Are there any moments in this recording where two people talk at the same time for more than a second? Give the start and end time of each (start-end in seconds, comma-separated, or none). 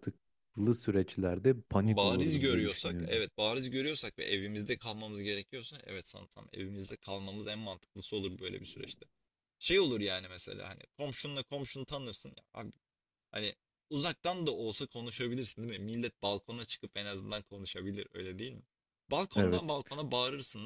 1.8-3.2